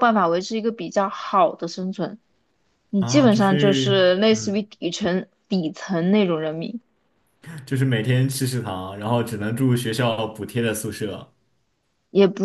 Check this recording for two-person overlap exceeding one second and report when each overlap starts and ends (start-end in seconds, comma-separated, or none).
3.0-4.7